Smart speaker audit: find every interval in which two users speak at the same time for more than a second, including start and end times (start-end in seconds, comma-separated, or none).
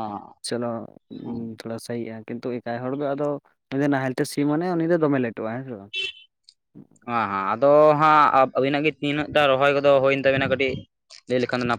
none